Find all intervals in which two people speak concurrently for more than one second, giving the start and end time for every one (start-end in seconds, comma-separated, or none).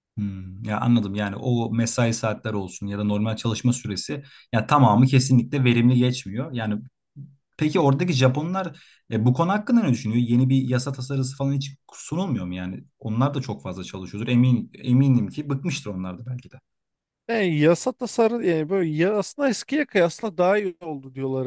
none